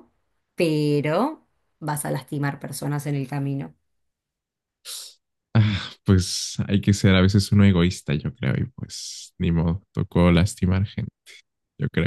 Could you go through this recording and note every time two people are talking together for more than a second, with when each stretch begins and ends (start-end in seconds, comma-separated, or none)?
none